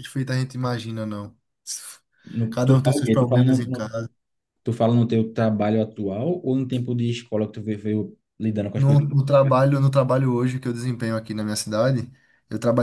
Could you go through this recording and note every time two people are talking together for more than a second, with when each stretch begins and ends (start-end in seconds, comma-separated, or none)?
2.5-3.9